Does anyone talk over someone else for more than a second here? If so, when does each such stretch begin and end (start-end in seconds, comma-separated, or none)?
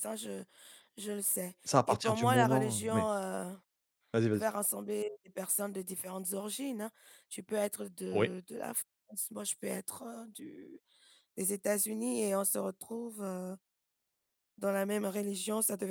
1.6-3.1